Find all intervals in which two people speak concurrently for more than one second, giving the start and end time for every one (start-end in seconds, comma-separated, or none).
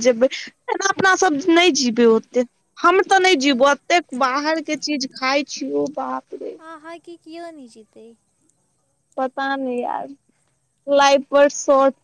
none